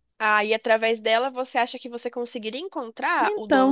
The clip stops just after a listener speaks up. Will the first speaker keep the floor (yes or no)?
no